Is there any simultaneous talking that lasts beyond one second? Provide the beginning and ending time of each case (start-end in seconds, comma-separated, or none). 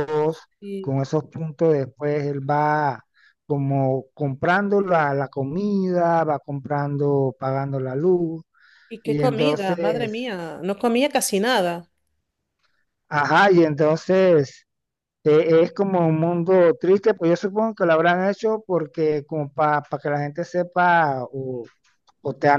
9.0-10.3